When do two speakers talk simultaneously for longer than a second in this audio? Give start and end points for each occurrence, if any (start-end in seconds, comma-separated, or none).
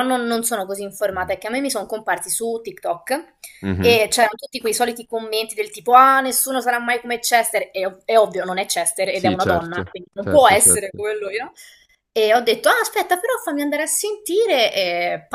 9.1-11.0